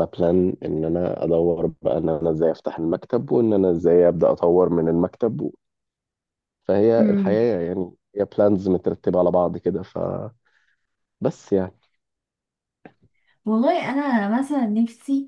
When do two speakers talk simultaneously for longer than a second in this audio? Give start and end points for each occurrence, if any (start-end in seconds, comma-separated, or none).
none